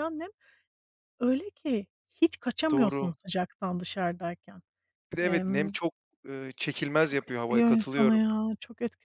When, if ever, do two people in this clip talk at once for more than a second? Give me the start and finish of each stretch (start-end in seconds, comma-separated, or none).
7.0-8.2